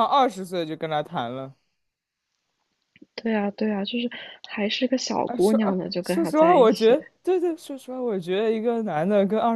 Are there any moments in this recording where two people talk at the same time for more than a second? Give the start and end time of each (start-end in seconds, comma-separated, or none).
5.2-7.0